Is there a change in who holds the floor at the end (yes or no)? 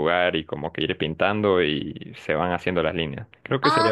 yes